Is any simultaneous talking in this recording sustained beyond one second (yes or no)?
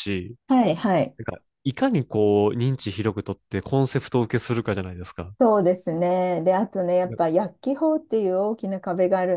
no